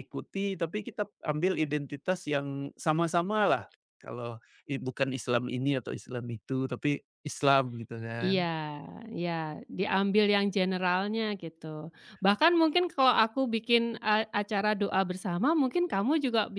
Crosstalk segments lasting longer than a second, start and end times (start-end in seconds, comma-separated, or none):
none